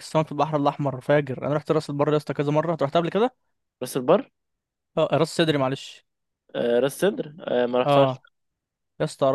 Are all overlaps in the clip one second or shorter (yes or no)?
yes